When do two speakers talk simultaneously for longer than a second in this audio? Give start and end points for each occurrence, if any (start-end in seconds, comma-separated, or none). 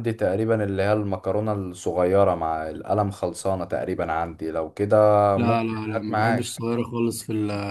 5.4-6.6